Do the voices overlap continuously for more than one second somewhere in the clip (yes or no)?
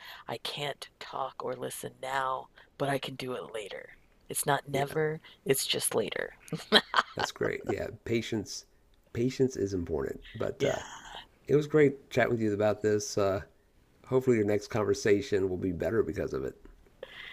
no